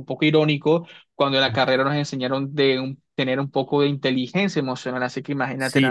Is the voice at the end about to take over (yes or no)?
yes